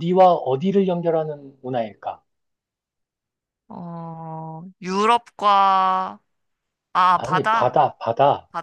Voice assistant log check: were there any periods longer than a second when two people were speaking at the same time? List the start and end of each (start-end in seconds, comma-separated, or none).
none